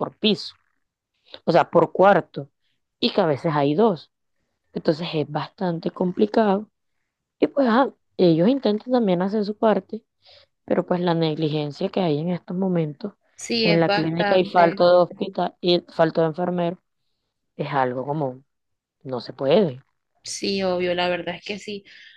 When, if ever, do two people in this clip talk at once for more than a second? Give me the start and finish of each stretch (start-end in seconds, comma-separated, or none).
13.6-14.8